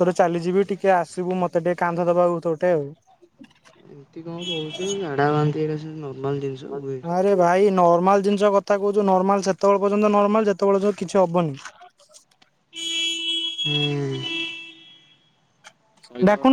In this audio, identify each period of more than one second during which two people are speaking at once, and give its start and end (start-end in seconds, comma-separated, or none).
none